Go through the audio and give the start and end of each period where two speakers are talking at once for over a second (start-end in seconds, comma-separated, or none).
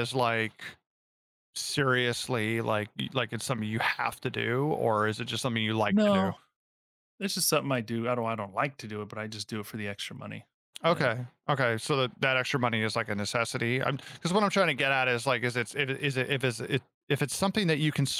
none